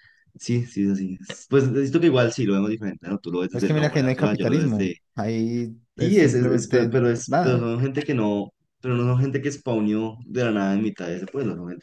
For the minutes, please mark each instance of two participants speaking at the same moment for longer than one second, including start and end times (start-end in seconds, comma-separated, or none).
3.5-5.0, 6.0-7.7